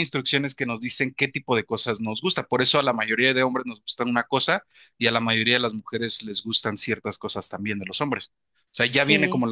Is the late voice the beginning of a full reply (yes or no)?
no